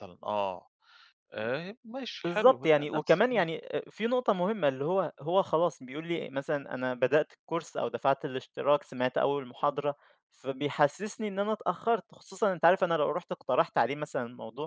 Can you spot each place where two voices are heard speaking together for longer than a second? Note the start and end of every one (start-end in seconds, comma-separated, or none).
2.2-3.5